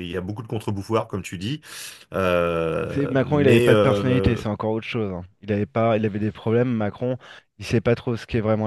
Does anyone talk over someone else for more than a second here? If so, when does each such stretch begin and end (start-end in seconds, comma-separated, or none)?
2.9-4.4